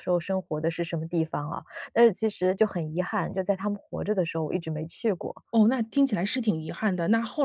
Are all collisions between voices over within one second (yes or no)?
yes